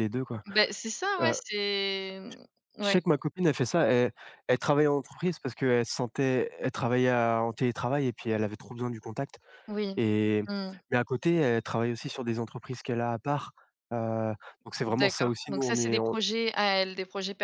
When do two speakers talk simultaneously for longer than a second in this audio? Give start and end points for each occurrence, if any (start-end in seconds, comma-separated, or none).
14.9-16.2